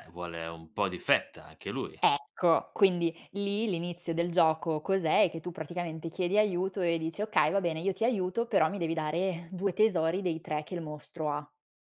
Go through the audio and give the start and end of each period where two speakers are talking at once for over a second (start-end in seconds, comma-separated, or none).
none